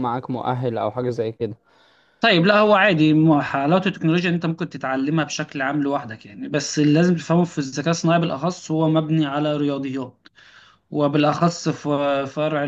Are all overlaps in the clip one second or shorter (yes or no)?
yes